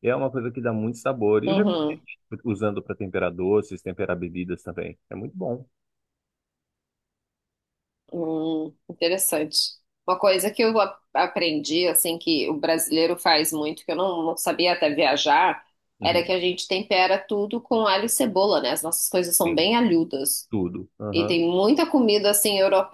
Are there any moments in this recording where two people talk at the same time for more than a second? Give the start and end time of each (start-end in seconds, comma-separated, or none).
none